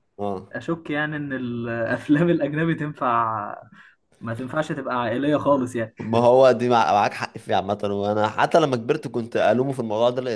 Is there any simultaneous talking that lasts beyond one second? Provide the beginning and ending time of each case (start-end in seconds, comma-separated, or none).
none